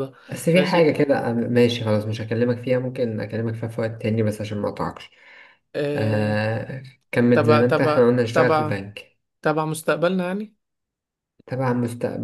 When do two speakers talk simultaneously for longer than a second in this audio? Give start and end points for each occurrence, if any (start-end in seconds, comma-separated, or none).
7.3-8.8